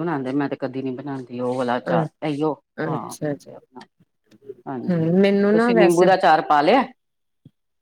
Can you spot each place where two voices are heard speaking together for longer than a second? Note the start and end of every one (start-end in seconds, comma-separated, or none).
4.9-6.1